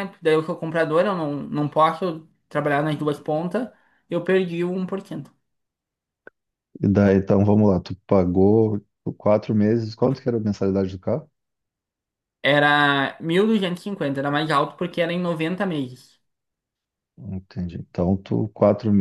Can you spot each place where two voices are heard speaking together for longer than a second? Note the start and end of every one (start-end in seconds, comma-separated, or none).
none